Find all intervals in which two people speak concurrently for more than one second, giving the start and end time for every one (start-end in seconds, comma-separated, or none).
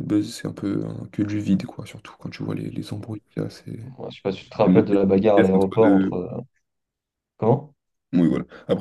4.7-6.2